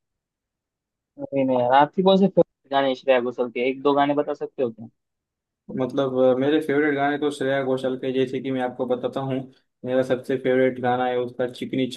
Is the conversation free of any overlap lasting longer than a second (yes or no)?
yes